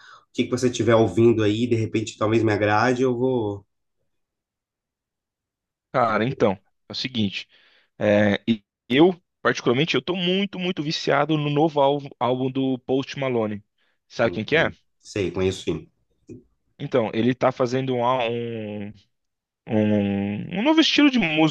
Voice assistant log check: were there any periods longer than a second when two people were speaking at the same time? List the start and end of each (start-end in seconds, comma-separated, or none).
none